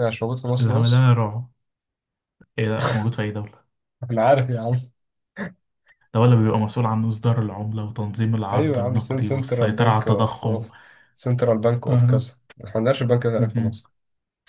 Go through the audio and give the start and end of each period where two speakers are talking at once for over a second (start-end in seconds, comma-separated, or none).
8.5-10.6